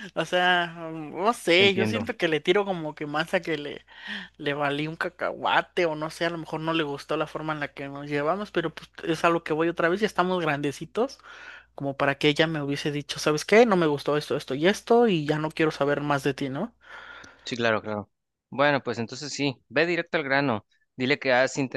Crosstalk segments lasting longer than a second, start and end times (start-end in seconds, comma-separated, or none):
none